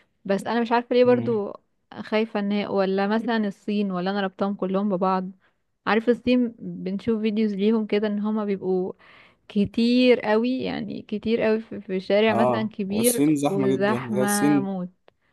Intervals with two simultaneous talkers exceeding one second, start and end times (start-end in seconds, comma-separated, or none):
12.3-14.7